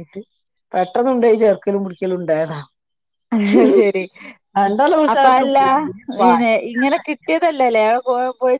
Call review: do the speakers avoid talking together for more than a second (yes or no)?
yes